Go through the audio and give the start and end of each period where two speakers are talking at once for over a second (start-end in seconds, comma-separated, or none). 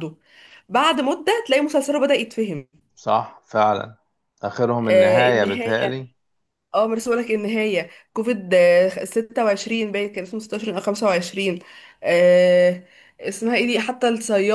4.8-6.1